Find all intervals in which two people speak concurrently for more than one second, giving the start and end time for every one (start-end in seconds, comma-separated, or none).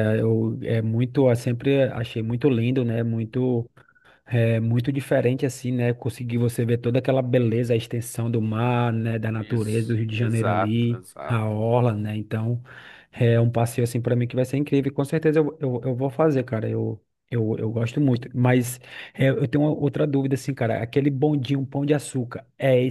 9.4-11.5